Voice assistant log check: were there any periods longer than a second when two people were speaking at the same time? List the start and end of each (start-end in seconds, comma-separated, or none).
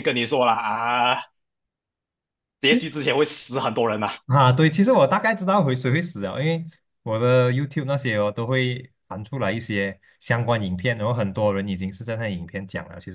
none